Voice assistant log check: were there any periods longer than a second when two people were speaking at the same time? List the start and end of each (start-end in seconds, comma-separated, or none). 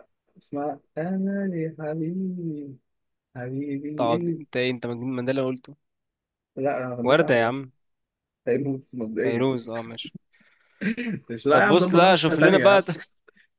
11.5-12.8